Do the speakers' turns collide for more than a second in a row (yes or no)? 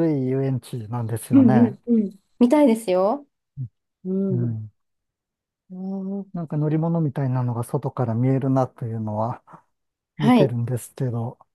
no